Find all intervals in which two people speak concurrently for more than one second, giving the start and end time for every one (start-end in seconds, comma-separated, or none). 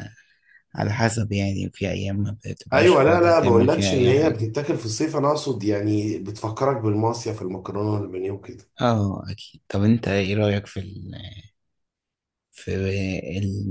2.7-4.5